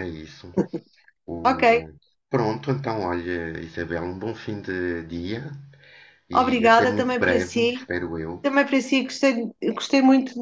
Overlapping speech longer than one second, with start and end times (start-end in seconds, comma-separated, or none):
6.3-7.7